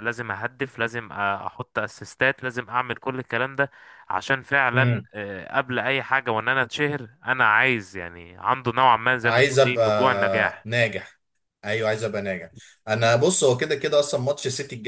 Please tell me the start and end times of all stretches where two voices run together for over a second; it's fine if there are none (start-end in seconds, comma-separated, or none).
9.2-10.7